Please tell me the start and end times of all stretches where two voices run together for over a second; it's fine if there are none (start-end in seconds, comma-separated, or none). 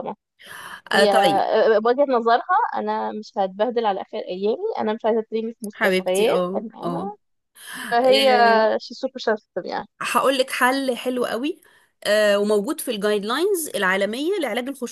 5.7-7.1